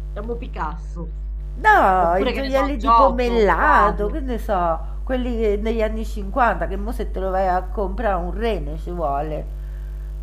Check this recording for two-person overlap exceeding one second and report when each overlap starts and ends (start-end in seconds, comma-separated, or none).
2.0-4.2